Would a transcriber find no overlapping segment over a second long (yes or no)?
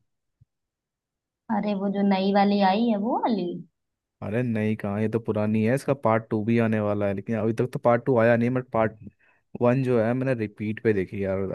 yes